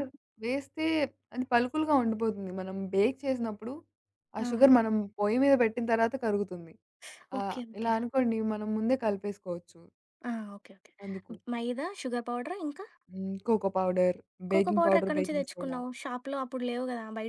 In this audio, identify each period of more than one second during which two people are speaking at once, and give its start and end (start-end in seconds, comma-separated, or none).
14.5-15.8